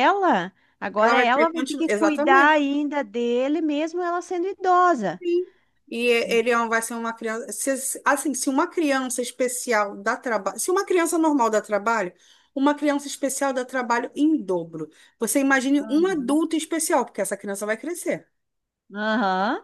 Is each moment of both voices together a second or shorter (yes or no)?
no